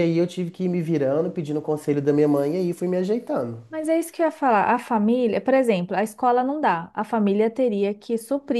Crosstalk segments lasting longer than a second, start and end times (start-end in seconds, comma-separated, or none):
none